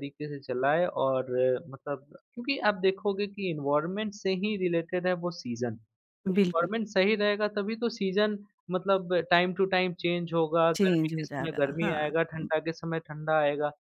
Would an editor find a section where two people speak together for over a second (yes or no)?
yes